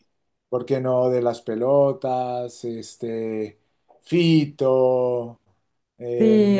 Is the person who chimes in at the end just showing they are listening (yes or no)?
no